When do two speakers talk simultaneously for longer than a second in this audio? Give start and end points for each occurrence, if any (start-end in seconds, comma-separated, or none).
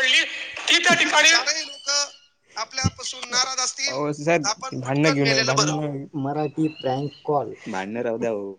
3.9-5.5